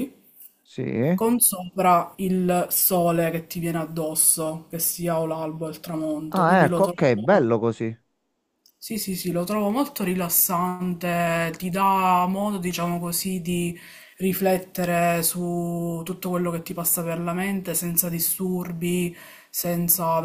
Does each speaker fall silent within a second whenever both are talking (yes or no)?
no